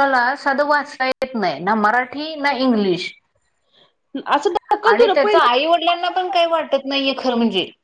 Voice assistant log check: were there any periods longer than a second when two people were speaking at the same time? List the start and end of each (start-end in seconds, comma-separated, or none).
4.9-6.3